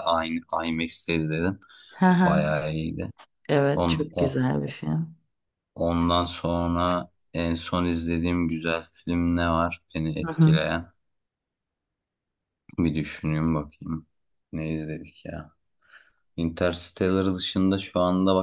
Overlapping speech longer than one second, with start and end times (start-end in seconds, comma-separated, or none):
none